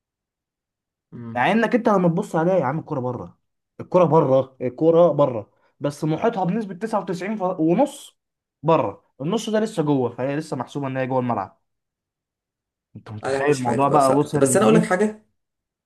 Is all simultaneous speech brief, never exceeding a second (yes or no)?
no